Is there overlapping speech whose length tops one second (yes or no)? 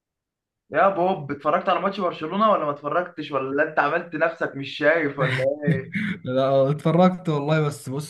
no